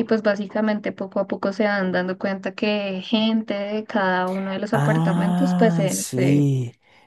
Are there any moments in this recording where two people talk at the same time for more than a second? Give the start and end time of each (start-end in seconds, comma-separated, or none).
4.7-6.5